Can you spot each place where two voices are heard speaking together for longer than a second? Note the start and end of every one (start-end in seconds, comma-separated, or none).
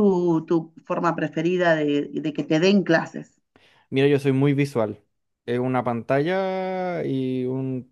none